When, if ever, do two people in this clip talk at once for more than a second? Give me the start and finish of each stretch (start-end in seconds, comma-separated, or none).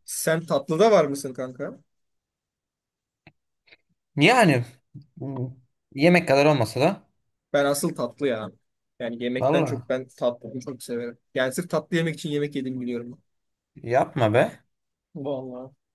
none